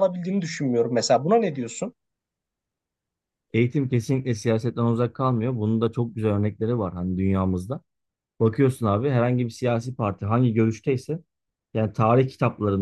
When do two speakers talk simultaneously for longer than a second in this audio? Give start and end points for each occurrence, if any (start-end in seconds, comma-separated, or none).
none